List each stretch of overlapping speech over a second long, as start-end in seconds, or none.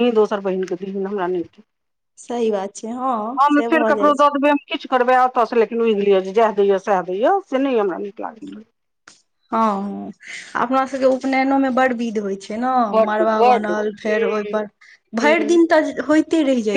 13.1-14.7